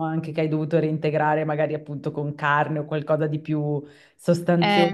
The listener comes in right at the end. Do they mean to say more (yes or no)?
no